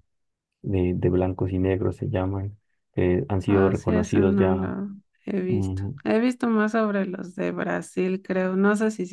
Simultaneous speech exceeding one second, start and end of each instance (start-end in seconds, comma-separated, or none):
3.5-4.7